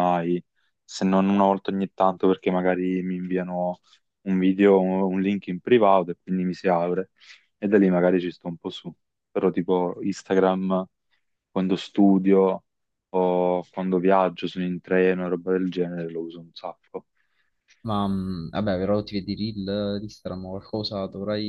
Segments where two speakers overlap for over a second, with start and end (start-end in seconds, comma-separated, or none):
none